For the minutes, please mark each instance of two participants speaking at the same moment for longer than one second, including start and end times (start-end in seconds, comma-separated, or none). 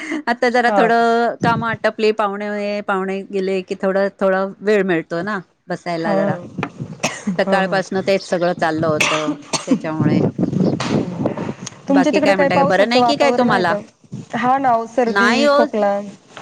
11.9-13.7